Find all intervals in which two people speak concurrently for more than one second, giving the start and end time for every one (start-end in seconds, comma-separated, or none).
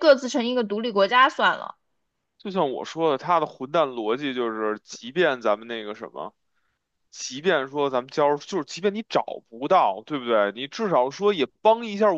none